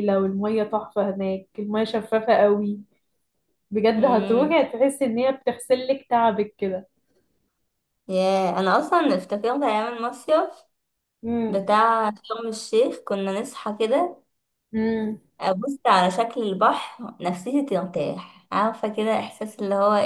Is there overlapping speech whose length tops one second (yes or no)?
no